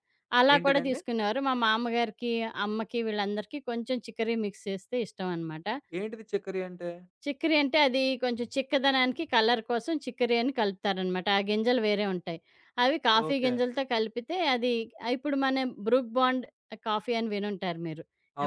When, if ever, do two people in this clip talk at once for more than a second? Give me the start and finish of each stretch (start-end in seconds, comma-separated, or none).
none